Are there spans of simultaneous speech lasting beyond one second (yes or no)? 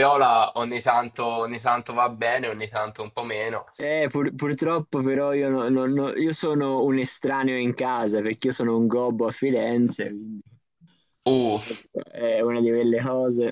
no